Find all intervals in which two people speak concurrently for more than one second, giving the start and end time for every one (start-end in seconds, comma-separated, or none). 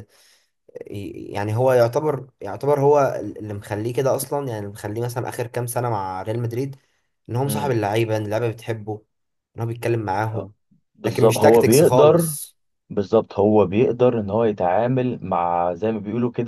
11.1-12.3